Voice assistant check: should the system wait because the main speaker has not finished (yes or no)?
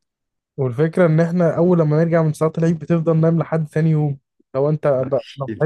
yes